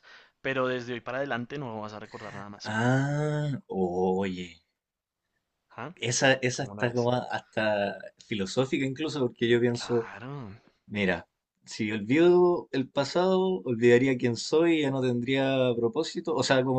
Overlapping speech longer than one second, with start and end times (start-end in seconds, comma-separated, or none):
none